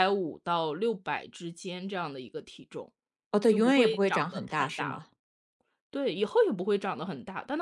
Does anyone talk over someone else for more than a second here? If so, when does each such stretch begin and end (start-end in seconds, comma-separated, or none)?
3.5-5.0